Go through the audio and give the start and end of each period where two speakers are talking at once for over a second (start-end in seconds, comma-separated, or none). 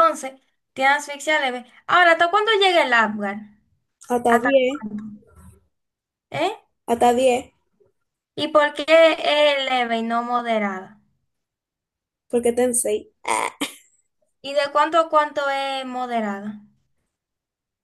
none